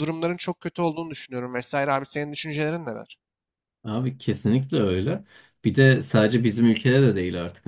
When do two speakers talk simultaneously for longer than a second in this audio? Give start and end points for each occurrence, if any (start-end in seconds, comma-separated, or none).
none